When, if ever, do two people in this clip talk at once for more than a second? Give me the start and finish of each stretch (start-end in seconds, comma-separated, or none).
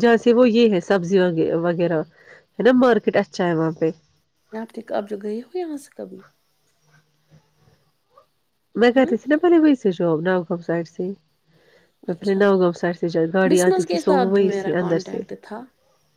13.5-15.2